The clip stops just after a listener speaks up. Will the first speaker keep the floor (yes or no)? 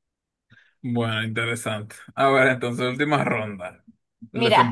no